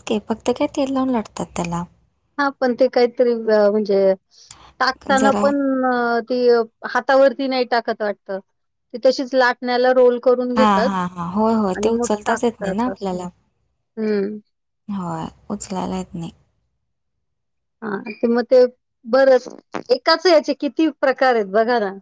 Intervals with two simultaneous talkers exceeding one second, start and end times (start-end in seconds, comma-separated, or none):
11.8-13.2